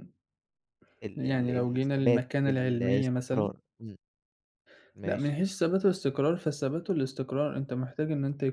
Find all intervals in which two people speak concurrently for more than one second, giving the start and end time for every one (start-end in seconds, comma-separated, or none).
1.1-3.5